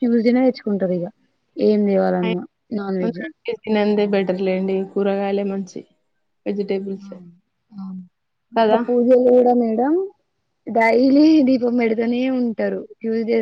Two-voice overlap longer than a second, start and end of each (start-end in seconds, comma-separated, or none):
none